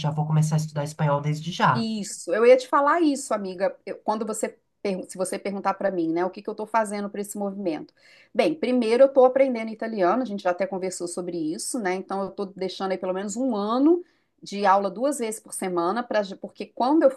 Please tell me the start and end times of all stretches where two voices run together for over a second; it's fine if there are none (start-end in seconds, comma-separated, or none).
none